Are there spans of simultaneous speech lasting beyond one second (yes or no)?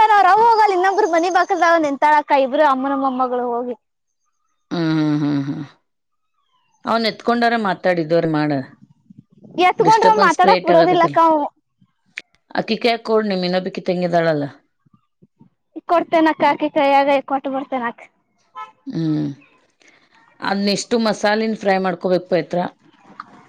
yes